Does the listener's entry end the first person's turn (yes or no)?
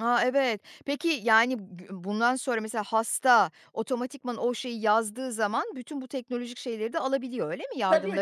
yes